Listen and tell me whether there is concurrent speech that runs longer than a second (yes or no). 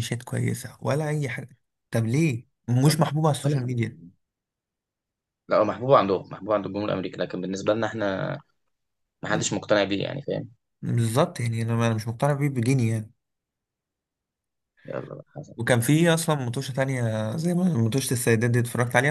no